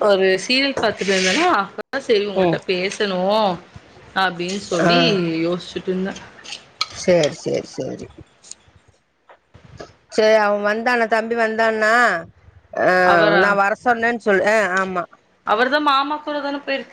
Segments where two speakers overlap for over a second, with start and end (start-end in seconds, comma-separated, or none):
none